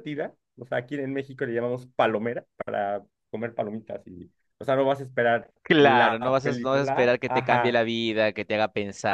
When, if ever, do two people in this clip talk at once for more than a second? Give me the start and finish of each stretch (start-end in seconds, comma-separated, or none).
5.6-7.8